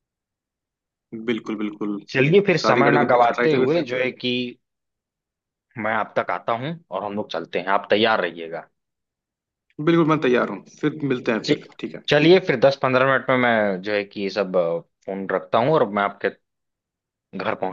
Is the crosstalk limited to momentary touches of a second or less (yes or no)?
no